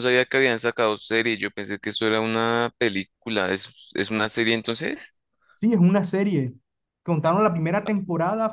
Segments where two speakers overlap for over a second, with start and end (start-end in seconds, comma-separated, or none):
none